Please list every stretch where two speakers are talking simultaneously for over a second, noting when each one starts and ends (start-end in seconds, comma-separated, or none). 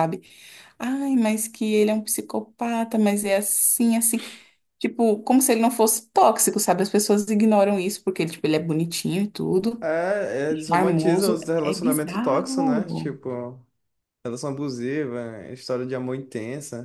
10.7-13.1